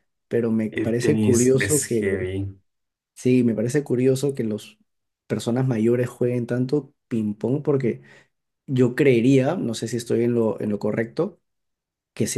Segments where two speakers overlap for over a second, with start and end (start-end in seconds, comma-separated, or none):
0.7-2.3